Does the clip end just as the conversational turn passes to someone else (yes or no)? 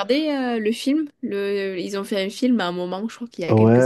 yes